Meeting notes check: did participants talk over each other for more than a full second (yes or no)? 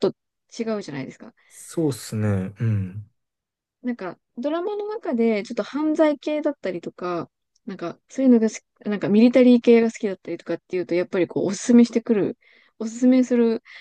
no